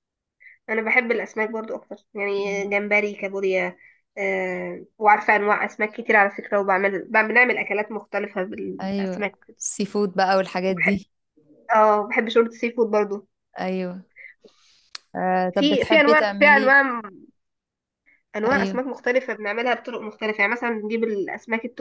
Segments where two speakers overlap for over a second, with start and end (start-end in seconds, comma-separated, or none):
15.5-16.8